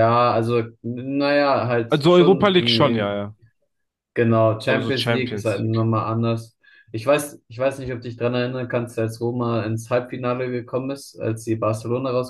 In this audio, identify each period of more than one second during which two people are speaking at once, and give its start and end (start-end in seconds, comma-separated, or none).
1.9-3.2, 4.7-5.9